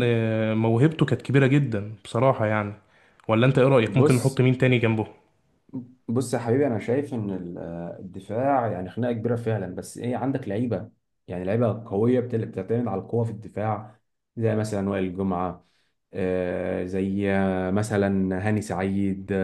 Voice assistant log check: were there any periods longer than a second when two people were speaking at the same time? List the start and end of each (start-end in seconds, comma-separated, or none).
none